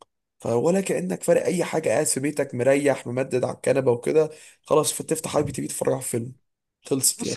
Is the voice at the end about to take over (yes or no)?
yes